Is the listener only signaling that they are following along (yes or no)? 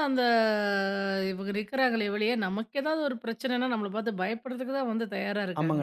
no